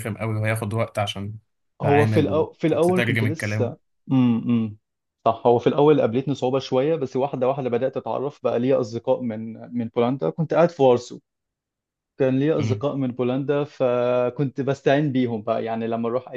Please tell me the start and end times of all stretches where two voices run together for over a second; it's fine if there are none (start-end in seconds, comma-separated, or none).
1.8-3.7